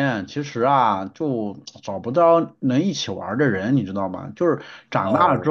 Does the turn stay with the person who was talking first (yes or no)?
yes